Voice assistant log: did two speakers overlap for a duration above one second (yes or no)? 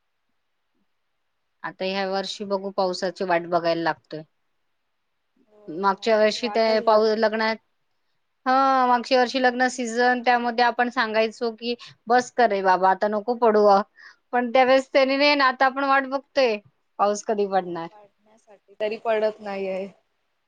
yes